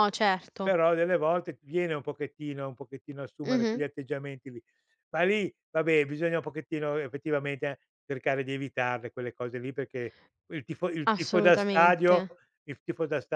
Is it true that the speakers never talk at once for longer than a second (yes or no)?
no